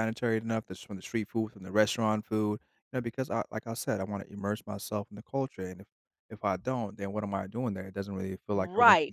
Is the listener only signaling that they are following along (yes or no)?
no